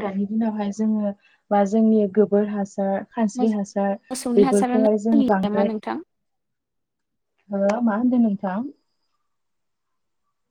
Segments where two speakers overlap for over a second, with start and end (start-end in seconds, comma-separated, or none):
4.0-5.8